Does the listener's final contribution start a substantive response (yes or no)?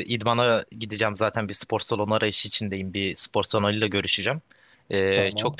no